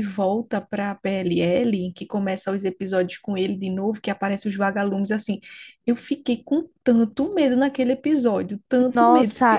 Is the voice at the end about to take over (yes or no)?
yes